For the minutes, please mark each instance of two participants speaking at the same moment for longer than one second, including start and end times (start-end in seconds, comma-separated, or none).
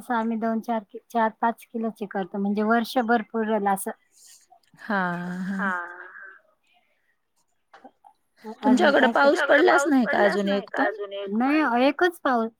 8.7-10.9